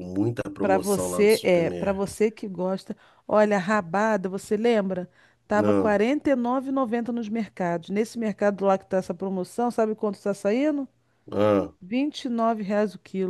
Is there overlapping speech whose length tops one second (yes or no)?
yes